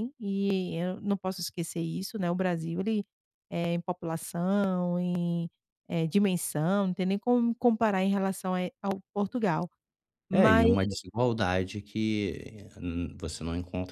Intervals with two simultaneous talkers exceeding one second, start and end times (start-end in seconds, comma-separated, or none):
none